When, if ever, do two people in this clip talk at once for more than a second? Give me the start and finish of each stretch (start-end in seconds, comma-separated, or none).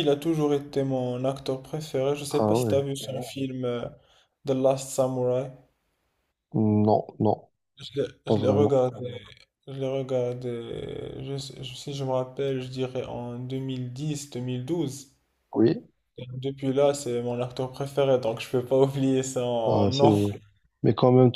none